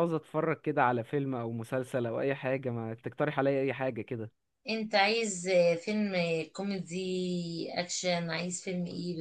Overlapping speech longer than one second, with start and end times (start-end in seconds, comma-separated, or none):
none